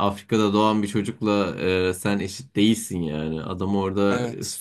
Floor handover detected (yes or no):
no